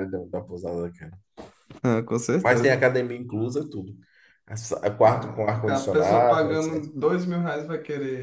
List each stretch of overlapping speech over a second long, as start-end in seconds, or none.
5.0-6.9